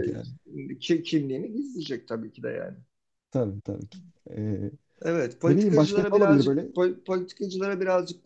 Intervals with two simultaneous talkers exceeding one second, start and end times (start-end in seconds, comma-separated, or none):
5.4-6.7